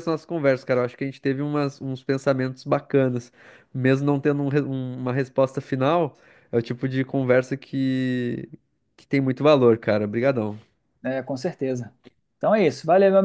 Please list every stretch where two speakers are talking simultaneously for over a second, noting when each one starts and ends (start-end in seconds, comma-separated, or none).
none